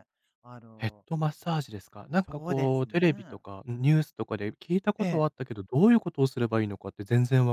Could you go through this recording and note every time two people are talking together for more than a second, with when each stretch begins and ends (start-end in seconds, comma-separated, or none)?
2.1-3.4